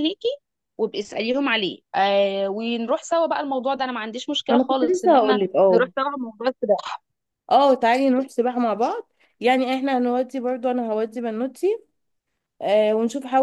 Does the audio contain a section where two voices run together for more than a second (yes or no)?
yes